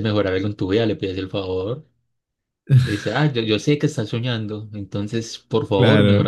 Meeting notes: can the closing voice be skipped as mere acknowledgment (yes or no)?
no